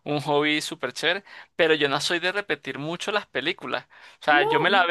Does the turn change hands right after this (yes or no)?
no